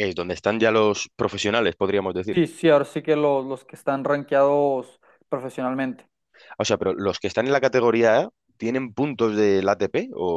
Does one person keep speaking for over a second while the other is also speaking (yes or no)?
no